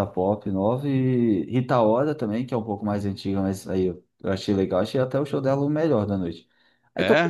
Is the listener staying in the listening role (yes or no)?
yes